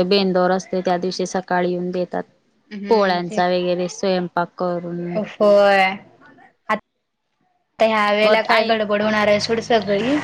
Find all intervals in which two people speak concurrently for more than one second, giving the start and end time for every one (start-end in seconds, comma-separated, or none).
none